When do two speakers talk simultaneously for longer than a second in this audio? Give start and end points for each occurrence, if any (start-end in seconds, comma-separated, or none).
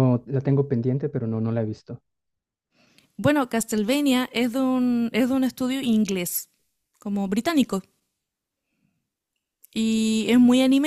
none